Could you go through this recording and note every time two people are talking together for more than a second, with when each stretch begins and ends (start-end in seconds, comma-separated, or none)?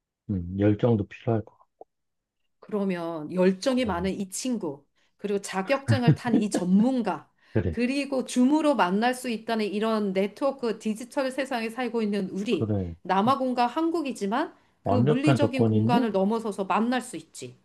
14.8-16.1